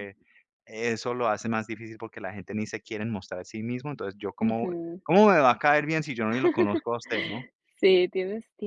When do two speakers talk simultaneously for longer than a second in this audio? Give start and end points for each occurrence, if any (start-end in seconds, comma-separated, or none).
none